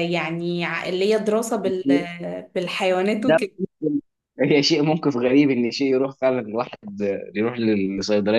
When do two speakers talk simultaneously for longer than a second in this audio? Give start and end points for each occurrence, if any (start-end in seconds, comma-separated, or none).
none